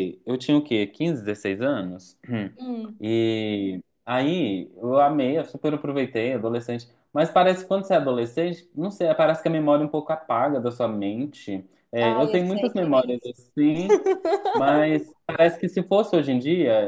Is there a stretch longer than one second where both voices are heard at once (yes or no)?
yes